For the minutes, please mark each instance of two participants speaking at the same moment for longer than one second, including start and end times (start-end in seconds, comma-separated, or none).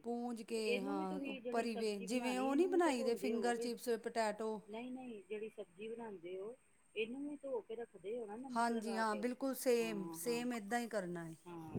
0.8-3.7